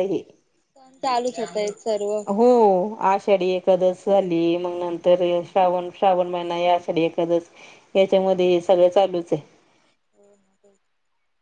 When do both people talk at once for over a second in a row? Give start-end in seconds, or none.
none